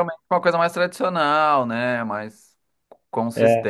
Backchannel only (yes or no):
yes